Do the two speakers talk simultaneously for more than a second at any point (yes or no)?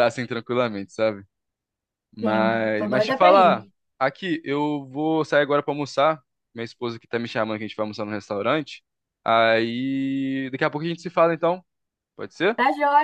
yes